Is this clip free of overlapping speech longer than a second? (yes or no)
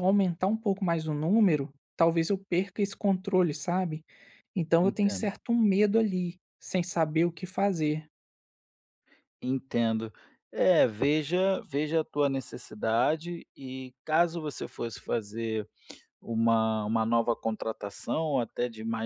yes